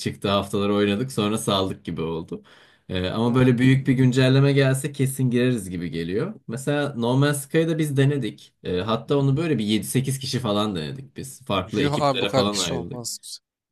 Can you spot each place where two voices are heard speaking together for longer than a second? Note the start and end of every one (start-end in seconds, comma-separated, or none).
11.8-13.0